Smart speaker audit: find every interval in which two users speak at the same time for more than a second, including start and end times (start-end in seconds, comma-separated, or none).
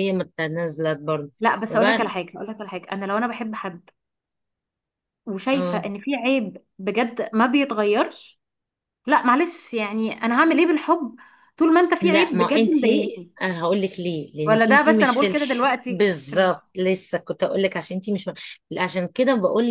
12.0-13.3, 14.4-16.7